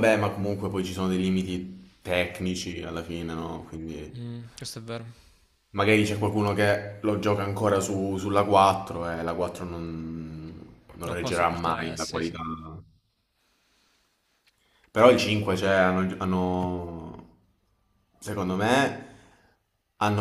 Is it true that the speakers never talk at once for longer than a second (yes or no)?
no